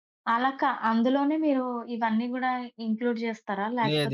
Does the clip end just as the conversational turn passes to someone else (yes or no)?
yes